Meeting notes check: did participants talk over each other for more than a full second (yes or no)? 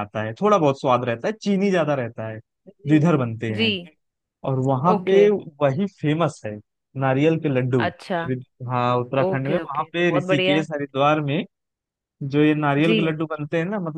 yes